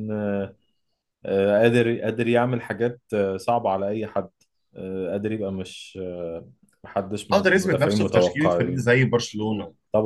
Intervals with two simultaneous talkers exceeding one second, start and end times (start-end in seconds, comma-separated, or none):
7.3-8.8